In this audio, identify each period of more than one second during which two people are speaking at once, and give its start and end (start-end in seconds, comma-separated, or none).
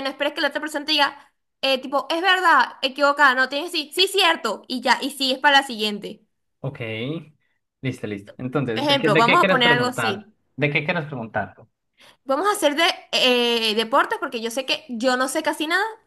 8.7-10.3